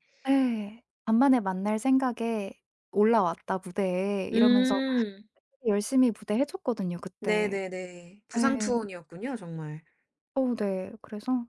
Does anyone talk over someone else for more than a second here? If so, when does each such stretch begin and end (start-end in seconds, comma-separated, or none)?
none